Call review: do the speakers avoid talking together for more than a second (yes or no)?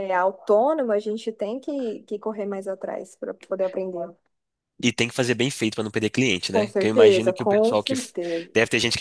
no